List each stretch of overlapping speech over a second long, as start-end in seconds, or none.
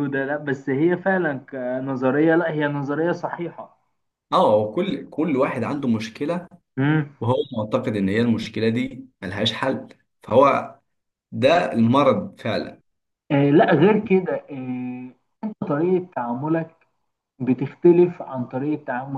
none